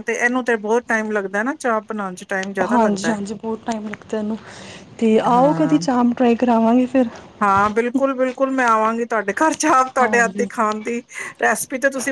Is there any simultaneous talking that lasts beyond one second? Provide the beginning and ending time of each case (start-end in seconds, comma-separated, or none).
none